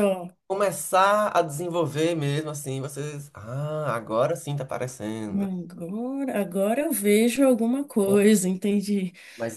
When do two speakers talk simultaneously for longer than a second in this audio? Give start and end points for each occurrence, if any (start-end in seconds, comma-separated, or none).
none